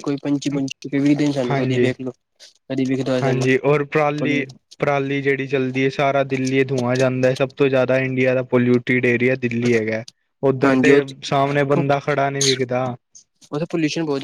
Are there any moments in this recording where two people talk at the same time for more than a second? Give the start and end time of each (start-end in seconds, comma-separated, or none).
none